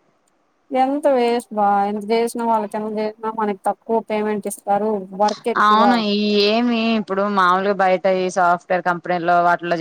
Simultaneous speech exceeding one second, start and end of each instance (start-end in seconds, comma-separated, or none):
none